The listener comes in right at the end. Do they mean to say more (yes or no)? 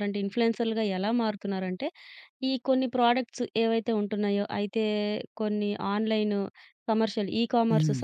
no